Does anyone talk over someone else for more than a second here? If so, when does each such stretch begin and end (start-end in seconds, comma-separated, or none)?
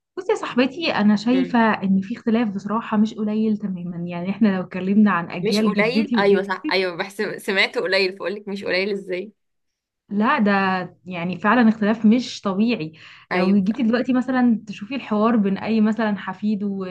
5.4-6.8